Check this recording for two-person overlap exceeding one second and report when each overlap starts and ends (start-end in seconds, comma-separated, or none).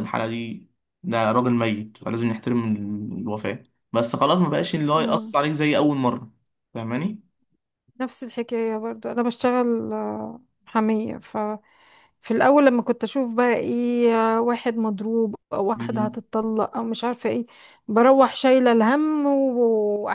none